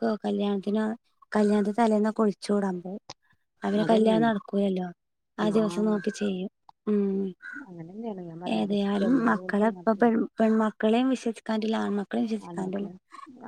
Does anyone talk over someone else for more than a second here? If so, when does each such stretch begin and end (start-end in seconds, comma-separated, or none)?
8.6-10.1